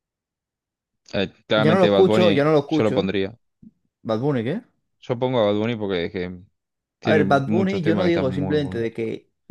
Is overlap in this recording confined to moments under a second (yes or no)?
no